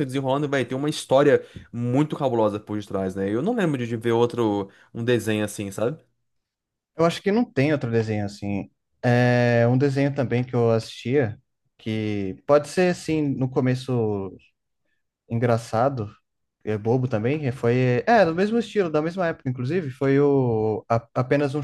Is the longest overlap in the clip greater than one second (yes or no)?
no